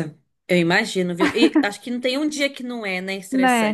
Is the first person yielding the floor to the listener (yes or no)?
yes